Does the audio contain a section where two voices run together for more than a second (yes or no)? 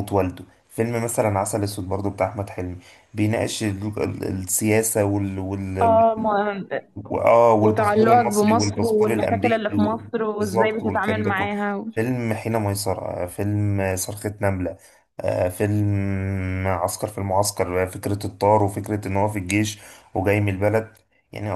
yes